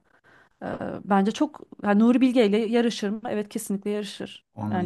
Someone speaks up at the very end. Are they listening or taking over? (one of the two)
taking over